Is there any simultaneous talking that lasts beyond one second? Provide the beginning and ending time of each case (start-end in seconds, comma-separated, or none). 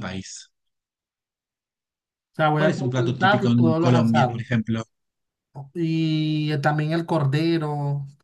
2.5-4.4